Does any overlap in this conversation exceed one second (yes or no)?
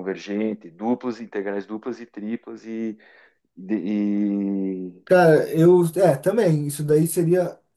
no